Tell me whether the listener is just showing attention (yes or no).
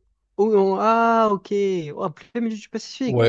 no